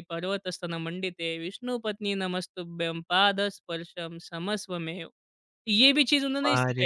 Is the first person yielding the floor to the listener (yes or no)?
yes